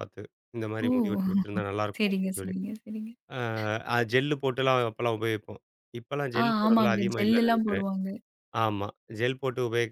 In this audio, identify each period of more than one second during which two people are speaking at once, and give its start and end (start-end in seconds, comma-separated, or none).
6.4-7.9